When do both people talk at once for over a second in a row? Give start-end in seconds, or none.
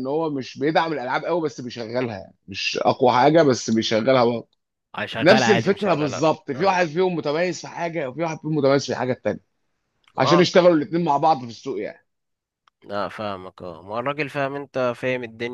5.2-6.8